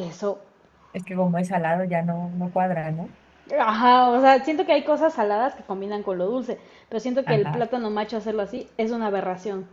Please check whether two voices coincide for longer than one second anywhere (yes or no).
no